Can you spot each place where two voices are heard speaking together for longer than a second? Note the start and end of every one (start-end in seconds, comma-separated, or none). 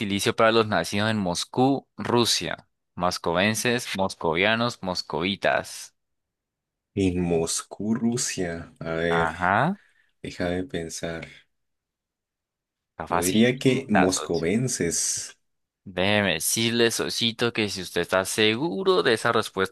13.1-14.5